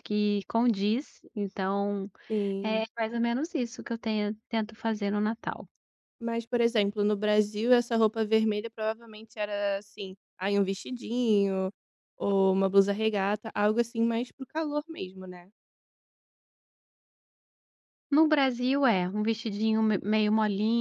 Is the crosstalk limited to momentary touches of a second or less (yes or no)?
yes